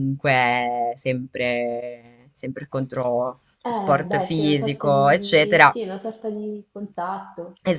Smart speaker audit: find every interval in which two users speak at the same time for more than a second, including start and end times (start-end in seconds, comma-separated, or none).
3.6-5.8